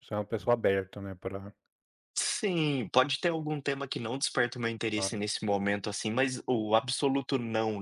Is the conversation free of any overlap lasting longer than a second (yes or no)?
yes